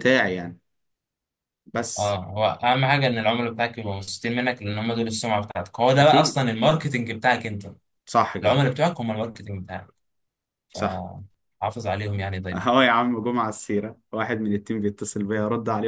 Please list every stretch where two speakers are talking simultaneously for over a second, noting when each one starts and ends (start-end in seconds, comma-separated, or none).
none